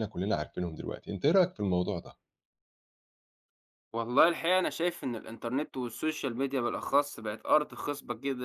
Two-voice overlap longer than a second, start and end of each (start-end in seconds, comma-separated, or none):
none